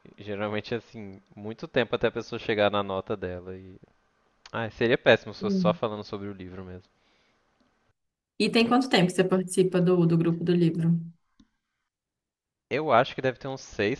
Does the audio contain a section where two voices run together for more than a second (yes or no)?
no